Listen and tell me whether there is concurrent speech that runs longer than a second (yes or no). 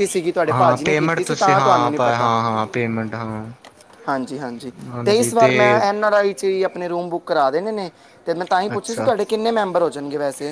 yes